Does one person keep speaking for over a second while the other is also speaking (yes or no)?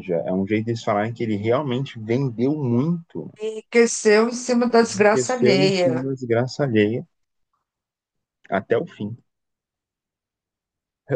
yes